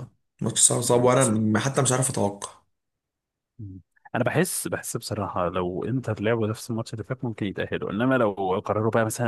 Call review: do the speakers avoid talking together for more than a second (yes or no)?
yes